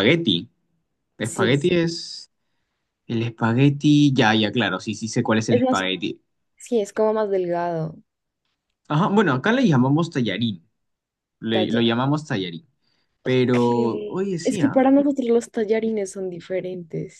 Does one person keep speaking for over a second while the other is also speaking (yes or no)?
yes